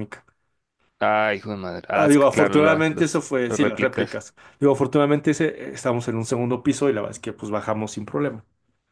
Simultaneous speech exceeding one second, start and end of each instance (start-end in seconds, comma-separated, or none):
2.0-4.2